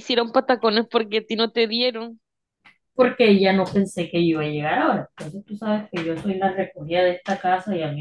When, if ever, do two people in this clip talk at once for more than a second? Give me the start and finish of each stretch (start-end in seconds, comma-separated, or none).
none